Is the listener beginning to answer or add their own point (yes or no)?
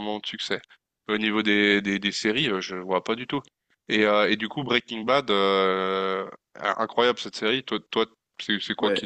yes